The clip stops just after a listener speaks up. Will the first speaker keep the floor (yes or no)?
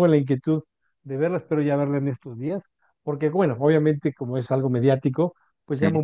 yes